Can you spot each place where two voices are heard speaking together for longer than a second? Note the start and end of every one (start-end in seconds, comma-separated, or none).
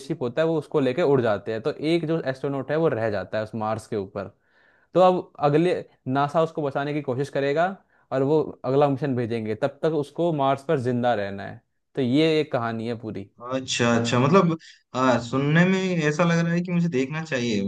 none